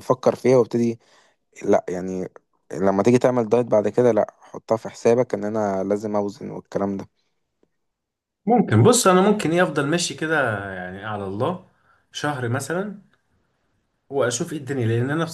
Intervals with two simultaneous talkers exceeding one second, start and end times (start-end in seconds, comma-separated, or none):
none